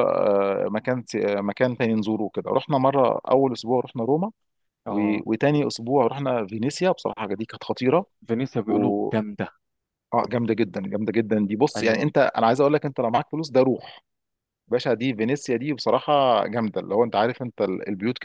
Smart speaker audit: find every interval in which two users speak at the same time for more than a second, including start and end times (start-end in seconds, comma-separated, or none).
none